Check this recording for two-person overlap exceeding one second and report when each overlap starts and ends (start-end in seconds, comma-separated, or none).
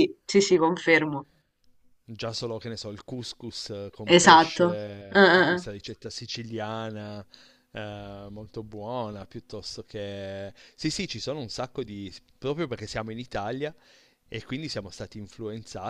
4.0-5.7